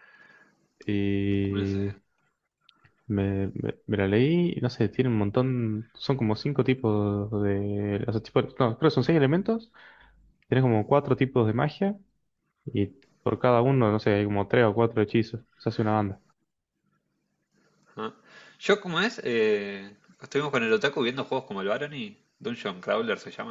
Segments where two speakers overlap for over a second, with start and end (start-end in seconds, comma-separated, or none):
none